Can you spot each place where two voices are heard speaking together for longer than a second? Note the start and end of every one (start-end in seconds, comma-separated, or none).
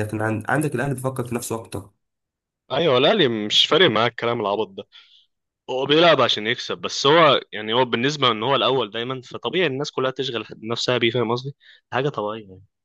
none